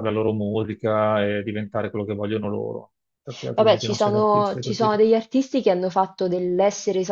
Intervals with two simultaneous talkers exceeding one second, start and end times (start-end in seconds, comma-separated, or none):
3.5-5.0